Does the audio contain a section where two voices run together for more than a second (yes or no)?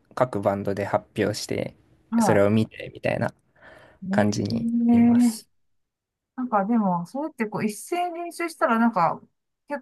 yes